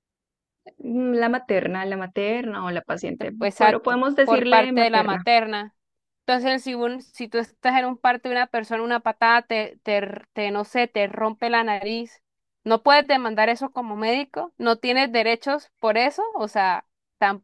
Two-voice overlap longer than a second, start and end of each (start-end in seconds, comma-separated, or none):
3.2-5.2